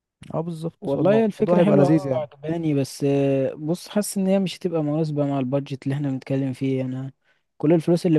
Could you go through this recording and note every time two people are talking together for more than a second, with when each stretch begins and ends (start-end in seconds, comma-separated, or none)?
0.8-2.3